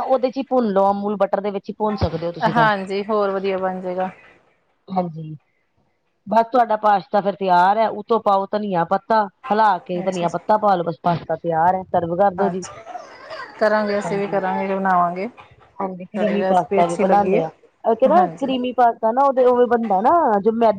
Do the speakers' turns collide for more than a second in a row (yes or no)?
yes